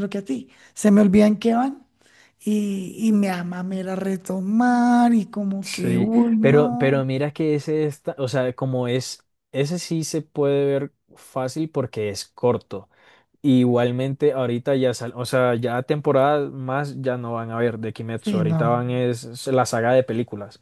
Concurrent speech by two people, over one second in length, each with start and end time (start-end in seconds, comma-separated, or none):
5.6-7.0